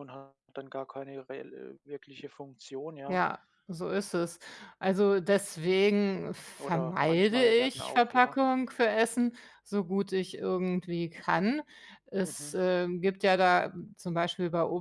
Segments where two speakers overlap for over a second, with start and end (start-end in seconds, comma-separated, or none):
6.6-8.4